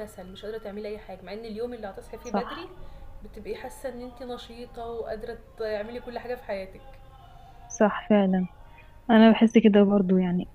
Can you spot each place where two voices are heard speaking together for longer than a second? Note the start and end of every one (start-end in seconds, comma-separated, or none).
none